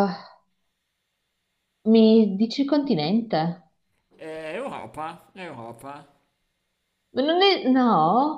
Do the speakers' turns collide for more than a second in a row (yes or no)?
no